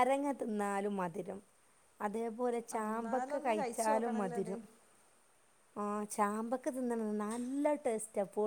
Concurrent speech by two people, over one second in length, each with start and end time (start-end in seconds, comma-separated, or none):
2.8-4.5